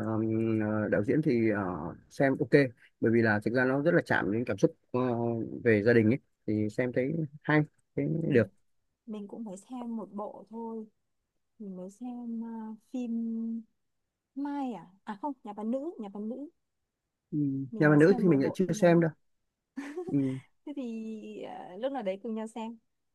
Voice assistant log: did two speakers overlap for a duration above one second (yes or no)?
yes